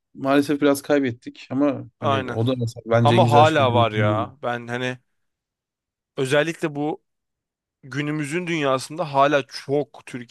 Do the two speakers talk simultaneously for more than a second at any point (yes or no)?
yes